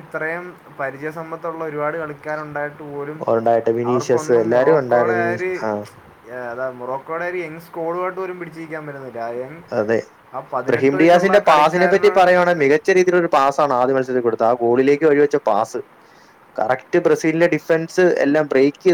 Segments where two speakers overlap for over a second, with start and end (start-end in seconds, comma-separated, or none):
3.9-5.5, 11.0-12.3